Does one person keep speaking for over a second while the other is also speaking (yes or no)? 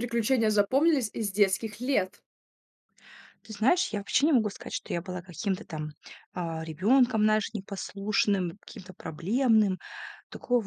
no